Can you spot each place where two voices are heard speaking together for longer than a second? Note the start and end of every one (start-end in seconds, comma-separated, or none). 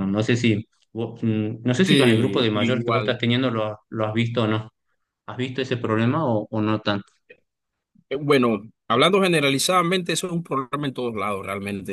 1.9-3.2